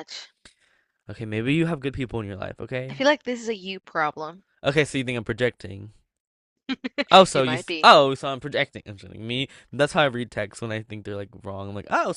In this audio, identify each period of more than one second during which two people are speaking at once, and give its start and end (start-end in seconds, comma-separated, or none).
none